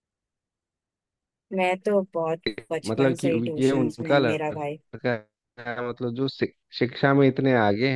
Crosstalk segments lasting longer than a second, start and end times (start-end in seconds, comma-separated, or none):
2.9-4.8